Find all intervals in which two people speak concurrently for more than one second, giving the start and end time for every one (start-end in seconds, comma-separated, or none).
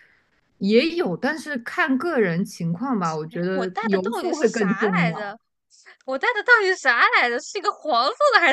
3.3-5.3